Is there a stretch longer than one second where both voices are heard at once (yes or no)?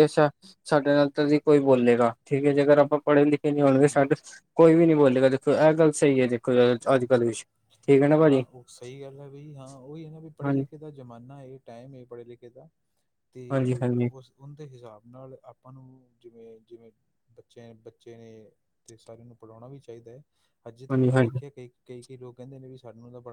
no